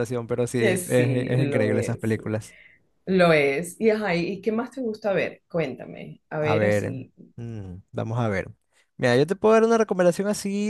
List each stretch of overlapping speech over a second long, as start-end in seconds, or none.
0.6-2.1